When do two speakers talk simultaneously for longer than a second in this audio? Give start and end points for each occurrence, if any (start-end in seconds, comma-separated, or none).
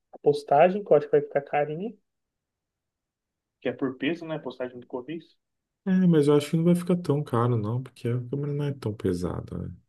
none